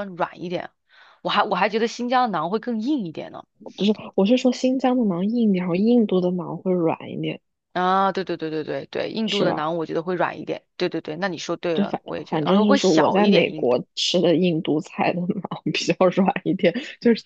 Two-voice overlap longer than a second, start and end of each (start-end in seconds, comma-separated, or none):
11.7-13.8